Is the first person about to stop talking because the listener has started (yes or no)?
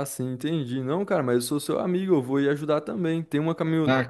no